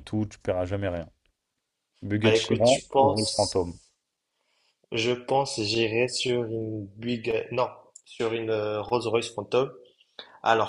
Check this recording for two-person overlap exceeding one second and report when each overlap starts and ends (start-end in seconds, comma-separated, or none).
2.2-3.8